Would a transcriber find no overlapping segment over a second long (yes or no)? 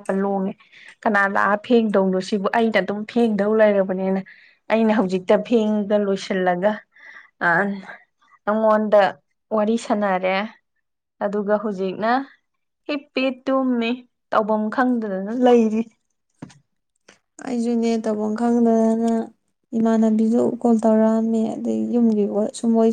yes